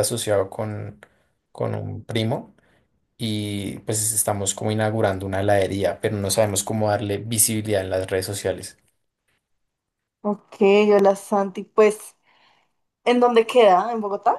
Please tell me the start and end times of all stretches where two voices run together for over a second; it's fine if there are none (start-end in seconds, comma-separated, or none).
none